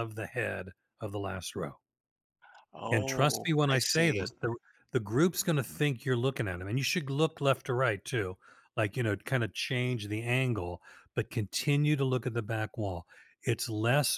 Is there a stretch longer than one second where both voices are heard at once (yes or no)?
yes